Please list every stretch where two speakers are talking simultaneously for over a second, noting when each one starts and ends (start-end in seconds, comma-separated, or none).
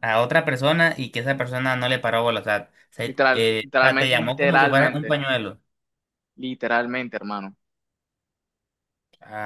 3.0-5.2